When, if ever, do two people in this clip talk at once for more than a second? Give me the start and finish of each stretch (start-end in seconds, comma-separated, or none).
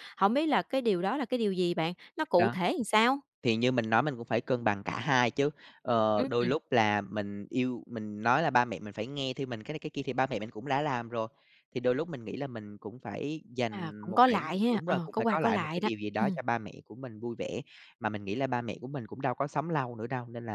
13.7-16.4